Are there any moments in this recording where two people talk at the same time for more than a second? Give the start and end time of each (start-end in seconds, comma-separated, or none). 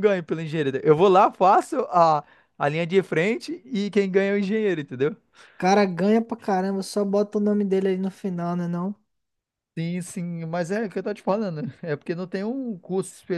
none